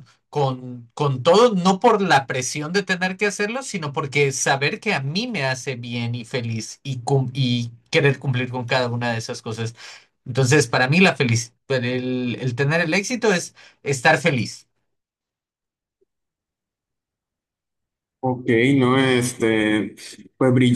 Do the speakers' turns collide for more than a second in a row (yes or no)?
no